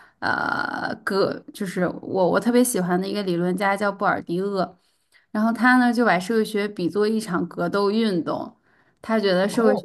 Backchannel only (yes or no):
yes